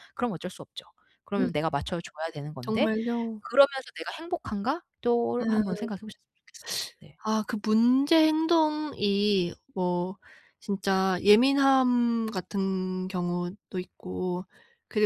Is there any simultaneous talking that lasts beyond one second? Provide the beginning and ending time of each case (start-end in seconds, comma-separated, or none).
none